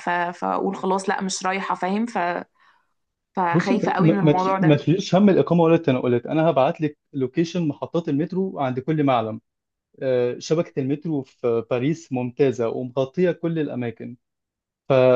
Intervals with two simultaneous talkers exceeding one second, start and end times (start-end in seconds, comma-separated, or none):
3.5-4.8